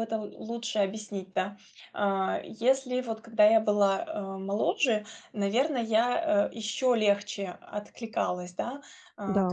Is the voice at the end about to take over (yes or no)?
no